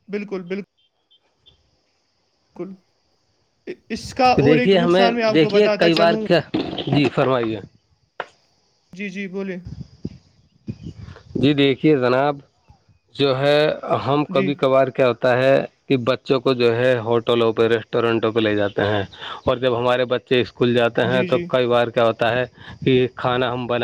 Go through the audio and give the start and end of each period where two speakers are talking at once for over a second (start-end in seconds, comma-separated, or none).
4.3-6.2